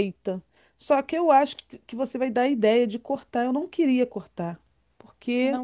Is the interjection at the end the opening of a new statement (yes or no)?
no